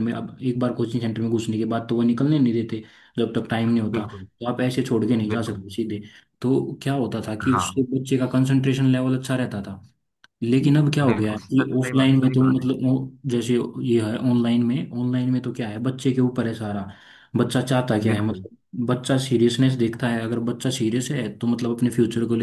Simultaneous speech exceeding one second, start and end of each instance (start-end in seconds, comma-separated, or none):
11.1-12.7